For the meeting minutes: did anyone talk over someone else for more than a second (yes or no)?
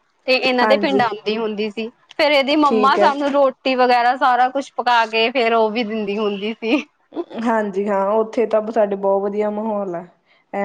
no